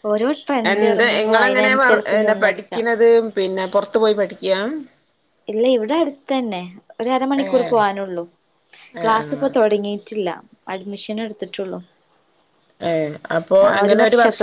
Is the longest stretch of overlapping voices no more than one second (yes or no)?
no